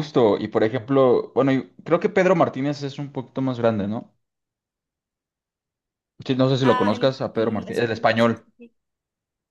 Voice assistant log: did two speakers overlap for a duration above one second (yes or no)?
yes